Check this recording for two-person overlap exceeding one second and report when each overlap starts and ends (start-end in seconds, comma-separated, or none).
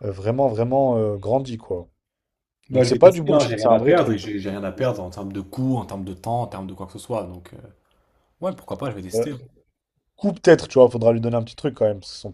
2.7-4.2